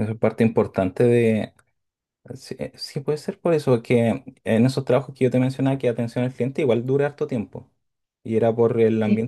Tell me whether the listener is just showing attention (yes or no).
yes